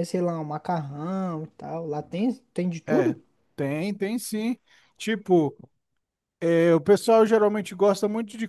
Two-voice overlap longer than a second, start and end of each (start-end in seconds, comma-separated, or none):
none